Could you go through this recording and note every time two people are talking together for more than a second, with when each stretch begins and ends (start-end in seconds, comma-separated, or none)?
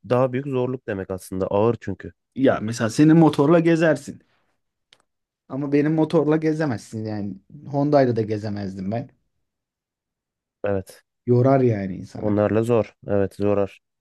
none